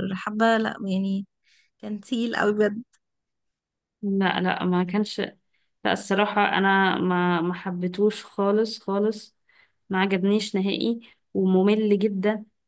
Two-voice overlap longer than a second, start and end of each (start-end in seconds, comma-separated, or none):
none